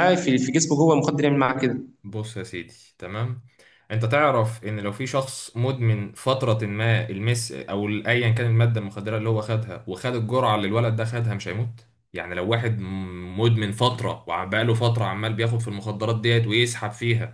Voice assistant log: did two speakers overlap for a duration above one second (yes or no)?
no